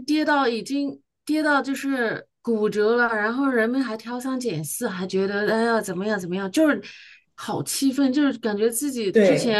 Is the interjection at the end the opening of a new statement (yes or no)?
no